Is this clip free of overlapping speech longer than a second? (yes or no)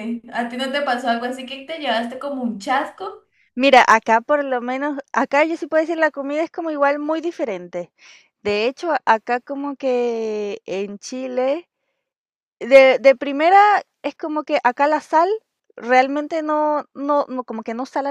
yes